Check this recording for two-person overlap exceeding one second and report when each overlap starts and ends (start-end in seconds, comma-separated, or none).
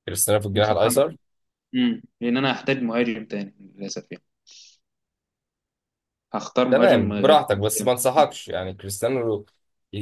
6.7-7.9